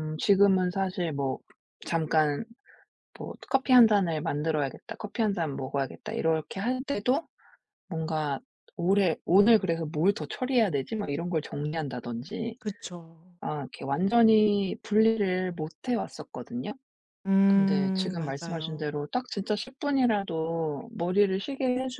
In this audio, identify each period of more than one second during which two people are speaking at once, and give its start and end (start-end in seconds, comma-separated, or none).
17.5-19.0